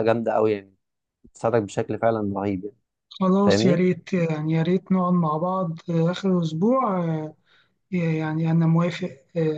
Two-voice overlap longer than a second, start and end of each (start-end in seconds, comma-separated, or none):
none